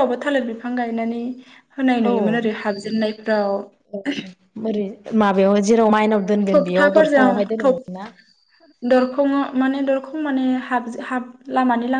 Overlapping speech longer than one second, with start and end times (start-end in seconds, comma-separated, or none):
none